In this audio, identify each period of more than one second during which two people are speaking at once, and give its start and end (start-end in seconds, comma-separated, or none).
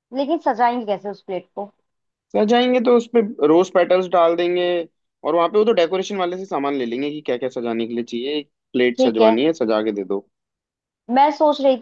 none